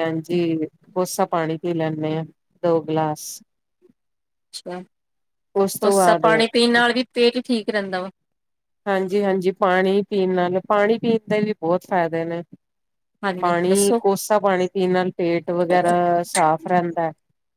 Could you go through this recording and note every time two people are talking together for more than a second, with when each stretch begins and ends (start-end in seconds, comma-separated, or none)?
none